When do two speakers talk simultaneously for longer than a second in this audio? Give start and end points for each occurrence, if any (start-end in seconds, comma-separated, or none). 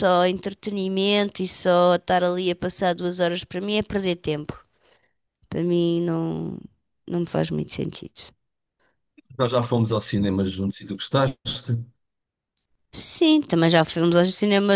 none